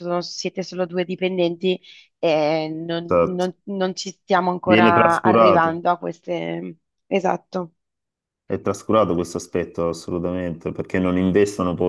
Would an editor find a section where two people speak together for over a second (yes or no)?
yes